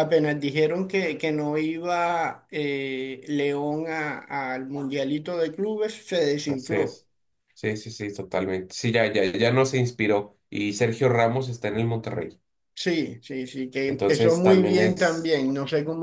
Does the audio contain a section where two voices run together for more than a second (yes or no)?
yes